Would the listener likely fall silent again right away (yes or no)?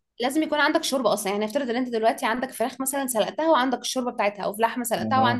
yes